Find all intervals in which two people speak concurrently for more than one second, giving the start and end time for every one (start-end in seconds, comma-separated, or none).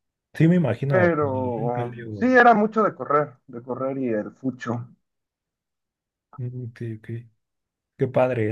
0.9-2.3